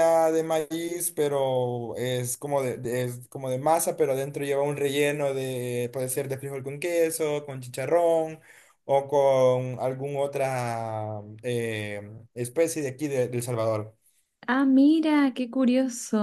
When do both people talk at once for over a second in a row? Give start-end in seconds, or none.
none